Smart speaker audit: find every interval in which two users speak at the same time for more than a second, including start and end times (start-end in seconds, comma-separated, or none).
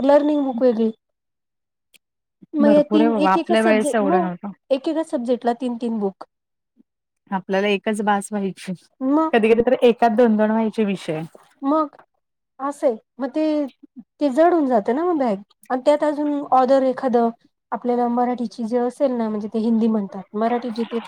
2.6-4.2